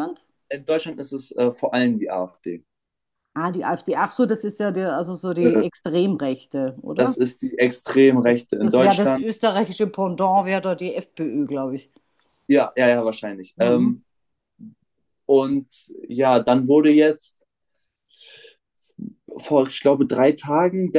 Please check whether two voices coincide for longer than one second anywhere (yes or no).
yes